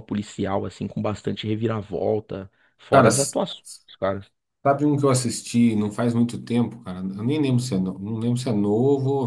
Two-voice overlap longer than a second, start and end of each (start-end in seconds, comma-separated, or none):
none